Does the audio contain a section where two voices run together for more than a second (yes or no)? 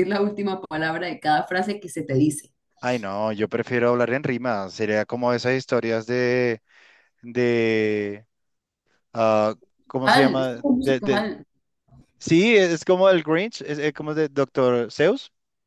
yes